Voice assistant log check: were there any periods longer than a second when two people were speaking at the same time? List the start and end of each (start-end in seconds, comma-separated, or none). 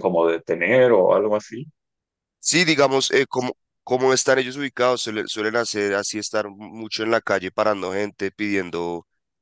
none